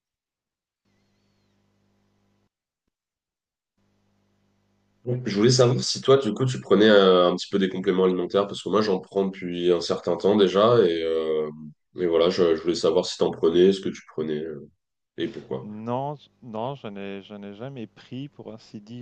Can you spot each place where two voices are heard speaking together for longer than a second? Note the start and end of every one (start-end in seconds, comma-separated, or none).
none